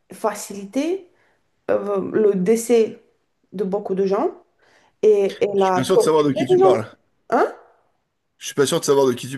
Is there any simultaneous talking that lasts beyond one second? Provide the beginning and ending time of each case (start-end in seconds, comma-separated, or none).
5.6-6.8